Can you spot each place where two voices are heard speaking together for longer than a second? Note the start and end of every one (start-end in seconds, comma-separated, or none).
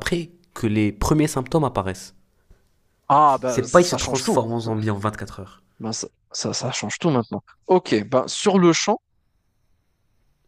3.4-4.7